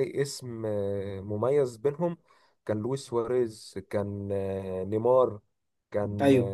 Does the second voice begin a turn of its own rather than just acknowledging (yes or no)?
no